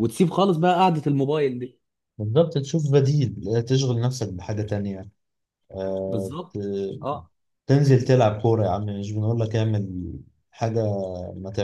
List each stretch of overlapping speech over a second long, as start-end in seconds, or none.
none